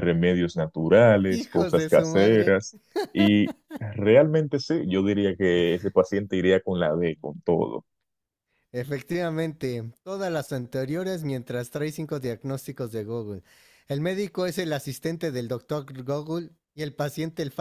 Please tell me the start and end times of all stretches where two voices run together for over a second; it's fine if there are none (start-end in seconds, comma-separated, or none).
1.3-2.6